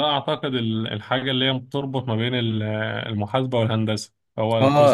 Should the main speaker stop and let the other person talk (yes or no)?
yes